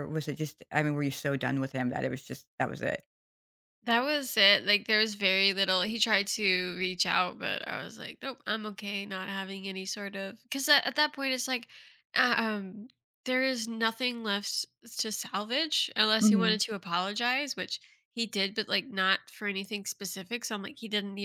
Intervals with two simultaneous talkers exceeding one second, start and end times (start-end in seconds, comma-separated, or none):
none